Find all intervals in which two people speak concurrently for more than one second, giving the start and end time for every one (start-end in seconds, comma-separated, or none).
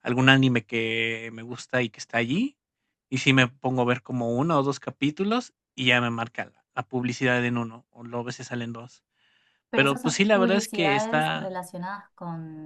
9.8-11.5